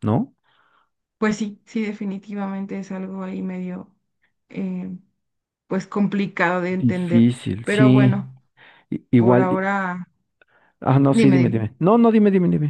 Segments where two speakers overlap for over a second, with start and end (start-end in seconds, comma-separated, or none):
6.8-8.2